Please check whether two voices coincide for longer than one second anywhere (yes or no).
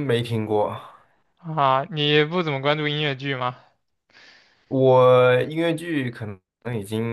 no